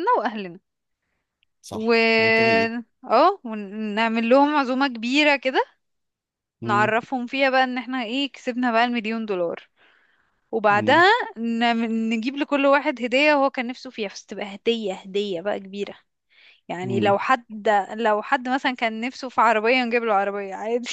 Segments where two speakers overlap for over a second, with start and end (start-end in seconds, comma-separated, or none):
none